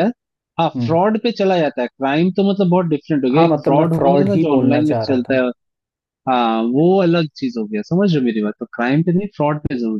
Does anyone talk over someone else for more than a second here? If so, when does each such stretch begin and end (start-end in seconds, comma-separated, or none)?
3.4-5.4